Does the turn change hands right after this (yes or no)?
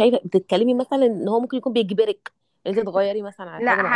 yes